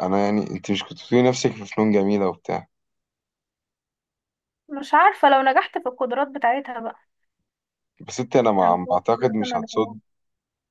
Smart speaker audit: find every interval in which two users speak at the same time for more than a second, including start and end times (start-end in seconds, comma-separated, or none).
8.6-9.9